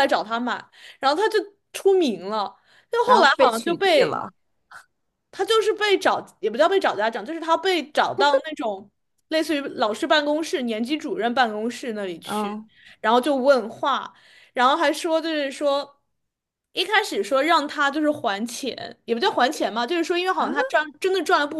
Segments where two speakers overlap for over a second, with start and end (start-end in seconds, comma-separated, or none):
3.0-4.2